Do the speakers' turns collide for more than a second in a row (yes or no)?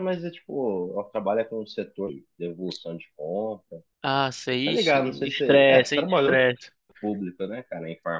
yes